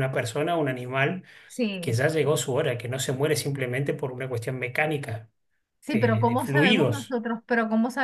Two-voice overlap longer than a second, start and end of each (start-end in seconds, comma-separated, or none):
5.9-7.2